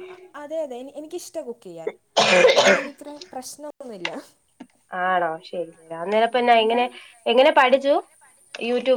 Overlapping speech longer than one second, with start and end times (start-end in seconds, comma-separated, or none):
none